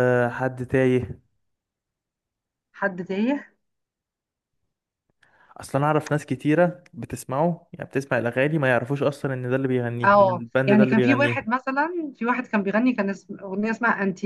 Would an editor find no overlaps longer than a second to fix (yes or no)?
no